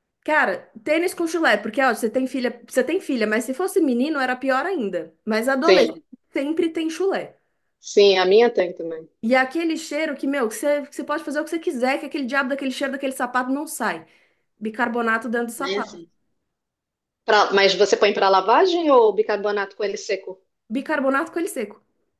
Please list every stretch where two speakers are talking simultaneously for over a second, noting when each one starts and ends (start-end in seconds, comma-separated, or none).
none